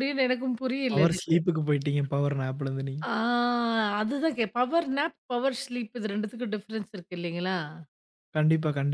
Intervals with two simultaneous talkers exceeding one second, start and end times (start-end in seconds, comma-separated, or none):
none